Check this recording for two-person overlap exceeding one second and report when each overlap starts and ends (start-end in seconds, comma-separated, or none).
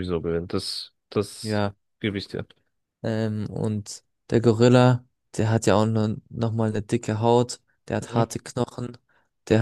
none